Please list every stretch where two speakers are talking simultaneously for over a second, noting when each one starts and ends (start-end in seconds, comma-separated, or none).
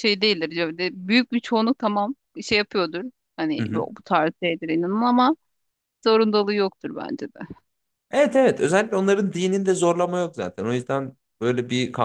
none